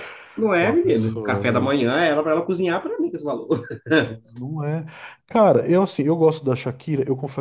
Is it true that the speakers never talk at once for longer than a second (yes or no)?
no